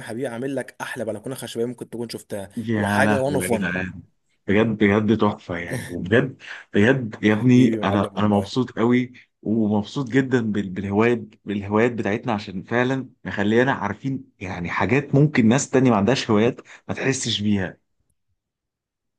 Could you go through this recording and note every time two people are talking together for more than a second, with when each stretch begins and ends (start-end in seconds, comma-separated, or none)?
2.6-3.8, 7.3-8.5